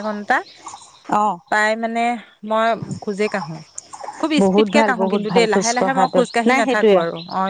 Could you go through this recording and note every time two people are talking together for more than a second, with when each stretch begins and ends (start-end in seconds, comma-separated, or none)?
4.4-7.0